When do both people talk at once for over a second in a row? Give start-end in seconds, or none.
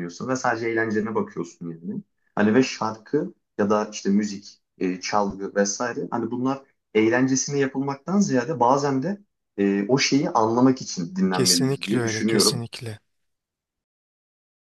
11.3-12.8